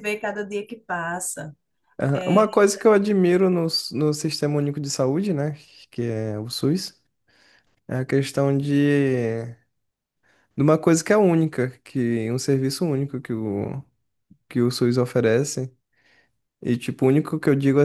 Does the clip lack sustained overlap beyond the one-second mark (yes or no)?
yes